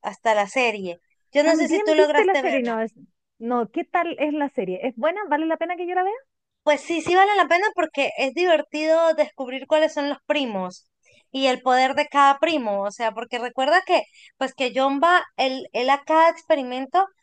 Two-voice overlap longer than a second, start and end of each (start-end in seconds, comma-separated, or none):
1.4-2.8